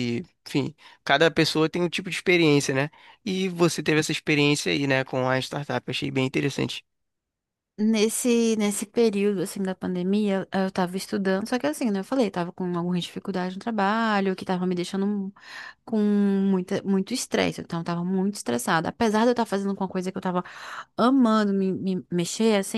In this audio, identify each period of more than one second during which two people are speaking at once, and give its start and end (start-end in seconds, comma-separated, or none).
none